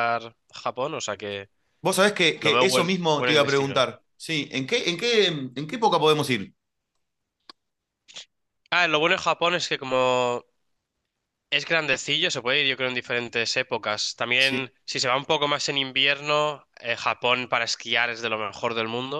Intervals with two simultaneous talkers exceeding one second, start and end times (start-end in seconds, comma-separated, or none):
2.4-3.9